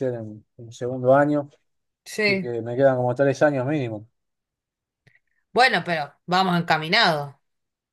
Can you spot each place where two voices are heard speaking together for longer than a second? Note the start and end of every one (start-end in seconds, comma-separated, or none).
none